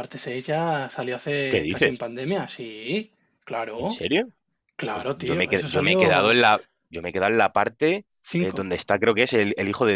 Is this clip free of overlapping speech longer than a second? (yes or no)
no